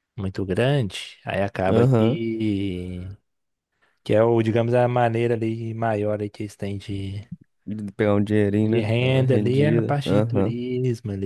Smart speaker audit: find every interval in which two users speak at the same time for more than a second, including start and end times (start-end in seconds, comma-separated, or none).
8.6-10.5